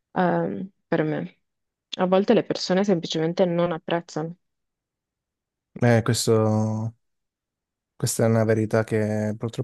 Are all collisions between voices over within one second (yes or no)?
yes